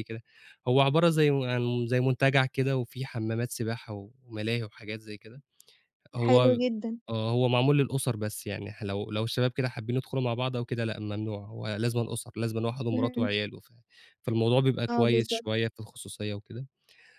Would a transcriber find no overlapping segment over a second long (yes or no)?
yes